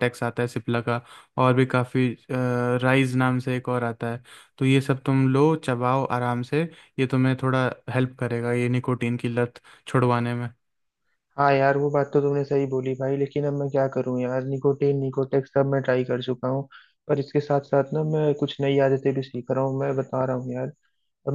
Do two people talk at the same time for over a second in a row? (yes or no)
no